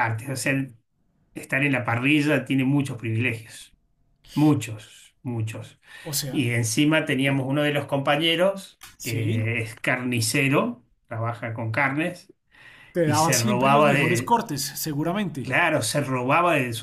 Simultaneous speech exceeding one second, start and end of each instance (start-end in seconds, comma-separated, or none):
13.0-14.4